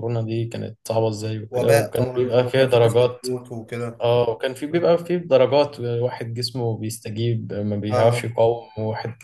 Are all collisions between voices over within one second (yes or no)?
no